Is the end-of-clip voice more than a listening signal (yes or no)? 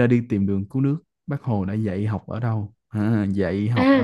yes